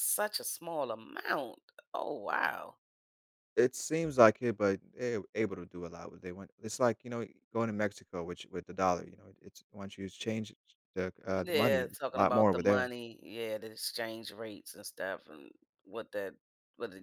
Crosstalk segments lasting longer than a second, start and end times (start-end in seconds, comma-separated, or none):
11.3-12.9